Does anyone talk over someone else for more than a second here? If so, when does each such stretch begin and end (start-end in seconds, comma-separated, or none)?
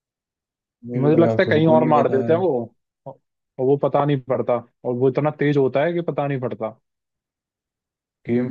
1.0-2.3